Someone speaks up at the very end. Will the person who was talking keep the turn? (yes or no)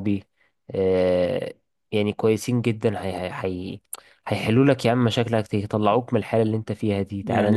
no